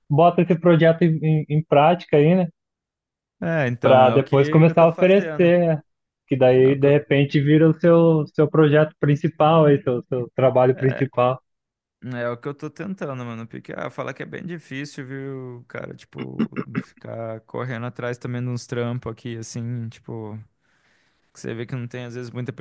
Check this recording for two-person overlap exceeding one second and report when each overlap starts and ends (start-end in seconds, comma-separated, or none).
3.8-5.5